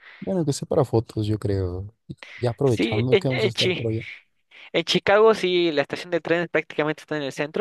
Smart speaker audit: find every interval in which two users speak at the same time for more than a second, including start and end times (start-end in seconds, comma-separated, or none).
2.6-3.9